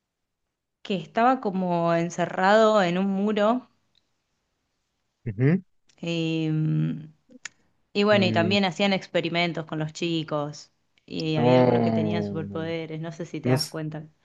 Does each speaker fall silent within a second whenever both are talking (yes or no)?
no